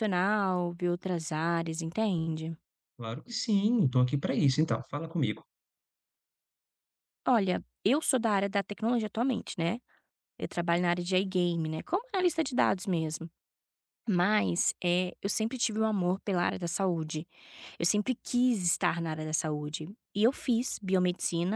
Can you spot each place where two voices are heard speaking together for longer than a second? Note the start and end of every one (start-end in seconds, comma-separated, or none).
none